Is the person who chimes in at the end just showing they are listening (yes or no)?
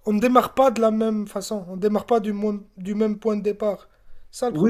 no